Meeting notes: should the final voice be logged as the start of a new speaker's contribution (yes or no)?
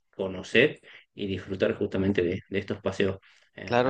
no